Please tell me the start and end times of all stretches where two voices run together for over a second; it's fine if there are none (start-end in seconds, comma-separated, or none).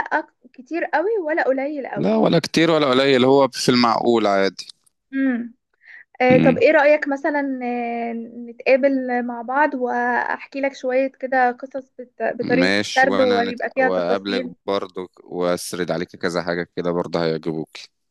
12.4-14.5